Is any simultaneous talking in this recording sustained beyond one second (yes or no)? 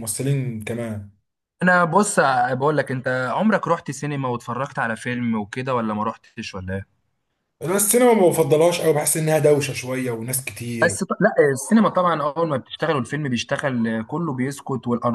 no